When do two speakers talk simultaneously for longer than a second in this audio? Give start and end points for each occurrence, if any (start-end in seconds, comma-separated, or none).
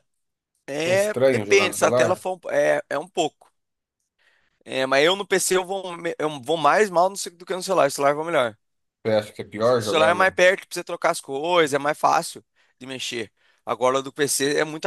0.8-2.2